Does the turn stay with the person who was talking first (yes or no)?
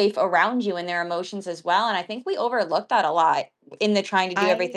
yes